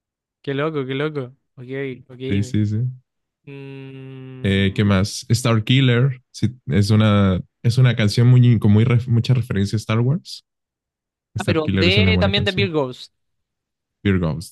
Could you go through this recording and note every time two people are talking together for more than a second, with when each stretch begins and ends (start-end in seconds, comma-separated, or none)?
11.4-12.7